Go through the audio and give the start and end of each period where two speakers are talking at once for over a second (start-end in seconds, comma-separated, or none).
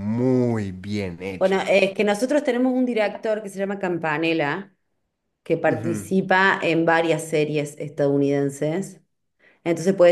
none